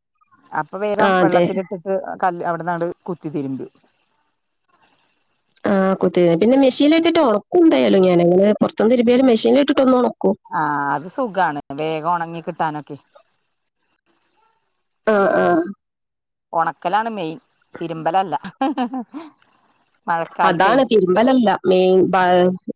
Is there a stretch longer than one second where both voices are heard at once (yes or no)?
no